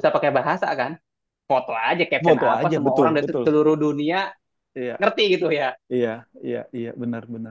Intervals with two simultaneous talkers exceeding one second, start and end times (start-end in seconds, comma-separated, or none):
2.2-3.5